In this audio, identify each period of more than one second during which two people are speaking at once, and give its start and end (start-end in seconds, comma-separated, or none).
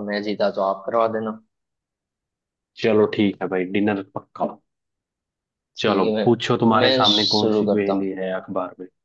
5.8-8.1